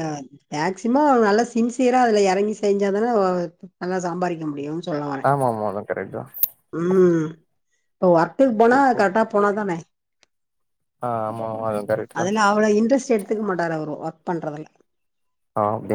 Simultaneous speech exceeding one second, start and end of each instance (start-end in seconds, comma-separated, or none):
none